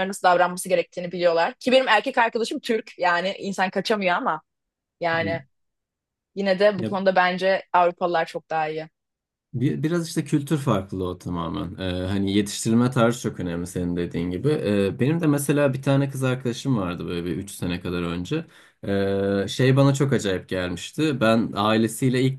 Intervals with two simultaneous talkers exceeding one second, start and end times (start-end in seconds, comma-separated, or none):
none